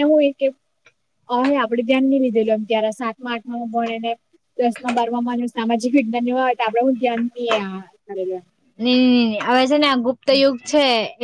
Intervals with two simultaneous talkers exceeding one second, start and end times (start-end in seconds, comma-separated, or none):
none